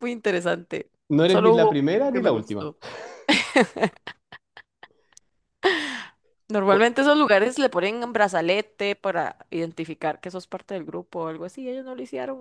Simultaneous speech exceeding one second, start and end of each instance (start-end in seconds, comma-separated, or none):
1.3-2.7